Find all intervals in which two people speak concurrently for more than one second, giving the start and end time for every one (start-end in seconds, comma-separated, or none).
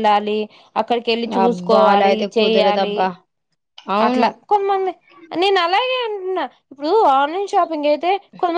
1.5-3.0